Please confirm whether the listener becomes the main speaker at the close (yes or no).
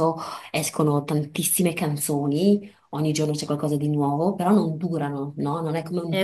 no